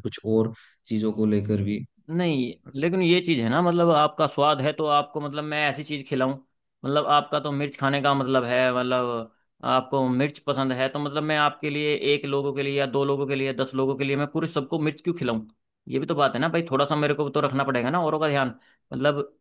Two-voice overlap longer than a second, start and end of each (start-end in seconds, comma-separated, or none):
none